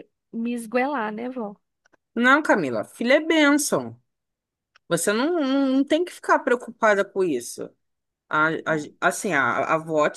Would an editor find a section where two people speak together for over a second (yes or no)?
no